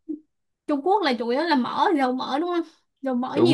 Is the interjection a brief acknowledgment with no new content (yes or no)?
no